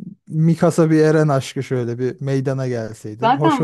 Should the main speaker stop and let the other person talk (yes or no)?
yes